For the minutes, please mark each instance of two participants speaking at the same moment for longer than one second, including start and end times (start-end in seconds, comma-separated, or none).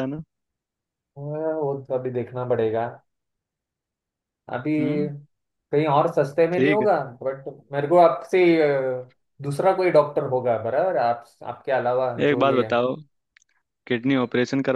none